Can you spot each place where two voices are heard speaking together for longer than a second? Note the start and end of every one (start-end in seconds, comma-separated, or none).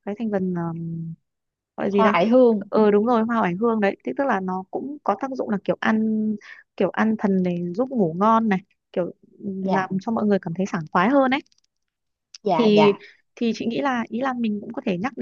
none